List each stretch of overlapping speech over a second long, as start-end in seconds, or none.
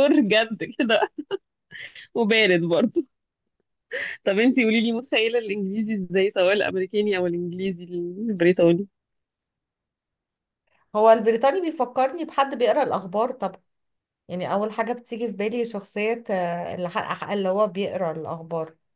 none